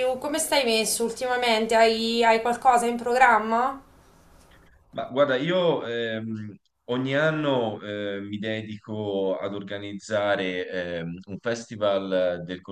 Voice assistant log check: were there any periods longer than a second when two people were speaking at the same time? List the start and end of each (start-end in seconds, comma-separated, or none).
none